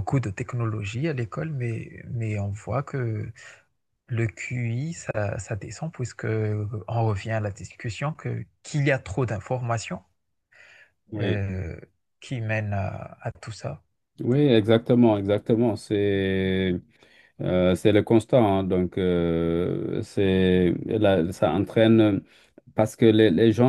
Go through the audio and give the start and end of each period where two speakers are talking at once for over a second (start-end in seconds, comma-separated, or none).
none